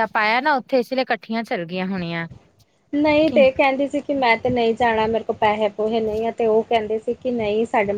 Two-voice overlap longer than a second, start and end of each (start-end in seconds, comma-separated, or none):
none